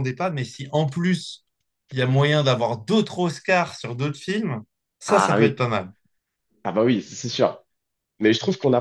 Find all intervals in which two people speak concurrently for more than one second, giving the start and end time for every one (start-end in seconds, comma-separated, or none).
none